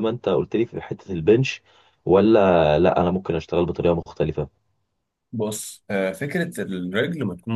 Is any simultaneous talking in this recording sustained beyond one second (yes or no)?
no